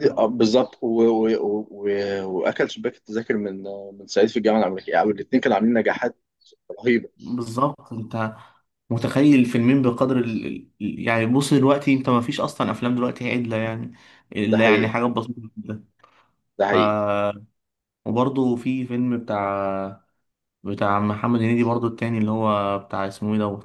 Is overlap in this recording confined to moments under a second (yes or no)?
yes